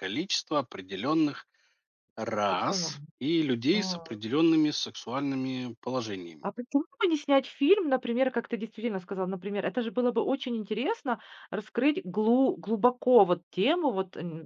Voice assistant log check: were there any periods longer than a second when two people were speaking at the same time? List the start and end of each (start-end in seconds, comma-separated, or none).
none